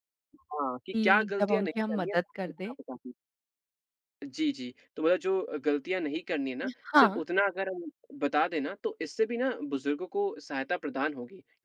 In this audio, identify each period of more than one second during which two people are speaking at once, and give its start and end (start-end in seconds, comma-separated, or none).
0.9-2.8